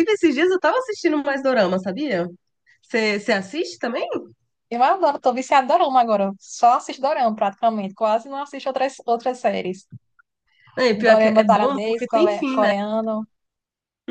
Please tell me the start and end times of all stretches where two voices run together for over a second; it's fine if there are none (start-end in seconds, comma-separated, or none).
11.1-12.7